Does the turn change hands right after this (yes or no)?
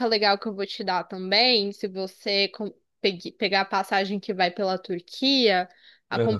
no